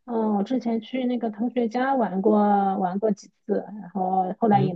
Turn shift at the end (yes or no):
yes